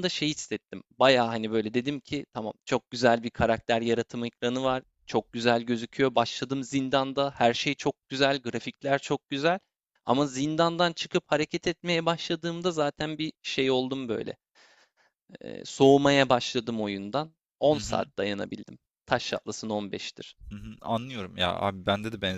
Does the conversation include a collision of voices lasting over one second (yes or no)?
no